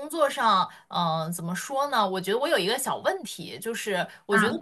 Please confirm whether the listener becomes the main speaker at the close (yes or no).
no